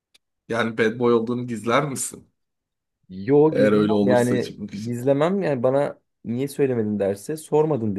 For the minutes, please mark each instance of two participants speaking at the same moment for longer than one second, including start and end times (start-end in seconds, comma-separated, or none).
3.5-5.0